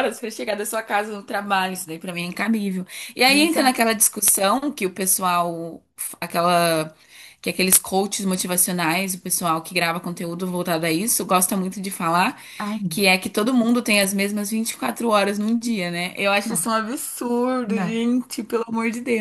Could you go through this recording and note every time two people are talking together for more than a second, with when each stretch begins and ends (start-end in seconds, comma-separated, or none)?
none